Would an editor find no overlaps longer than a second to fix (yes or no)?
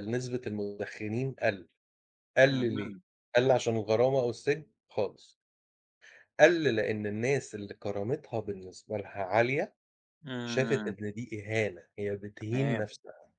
yes